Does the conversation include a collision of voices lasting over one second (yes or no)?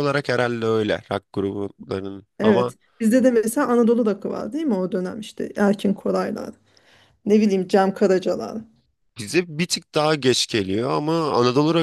no